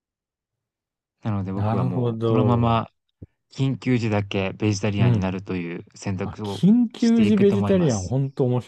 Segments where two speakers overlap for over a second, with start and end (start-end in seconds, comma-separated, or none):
1.5-2.8, 6.2-8.2